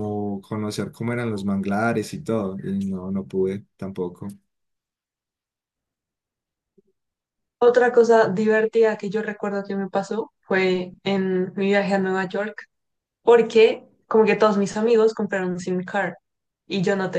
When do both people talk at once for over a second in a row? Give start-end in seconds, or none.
none